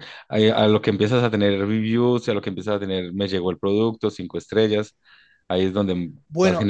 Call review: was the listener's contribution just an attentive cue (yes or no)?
no